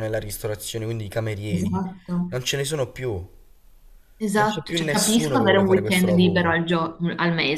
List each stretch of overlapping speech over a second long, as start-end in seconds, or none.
4.4-6.6